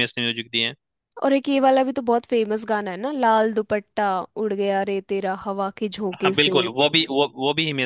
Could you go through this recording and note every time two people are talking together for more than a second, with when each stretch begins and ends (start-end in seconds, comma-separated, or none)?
none